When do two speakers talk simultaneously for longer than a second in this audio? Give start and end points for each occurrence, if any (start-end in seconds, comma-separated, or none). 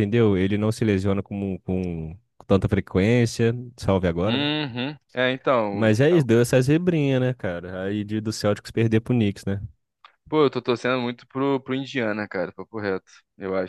none